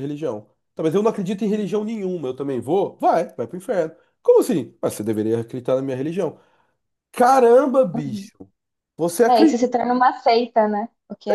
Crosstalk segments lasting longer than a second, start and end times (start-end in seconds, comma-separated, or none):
none